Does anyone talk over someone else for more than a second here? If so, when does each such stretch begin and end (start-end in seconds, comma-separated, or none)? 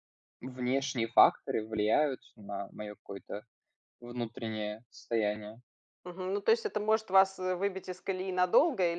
none